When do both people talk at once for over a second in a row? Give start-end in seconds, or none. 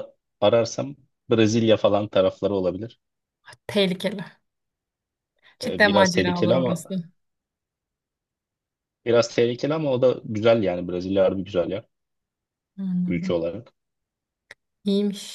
5.6-6.8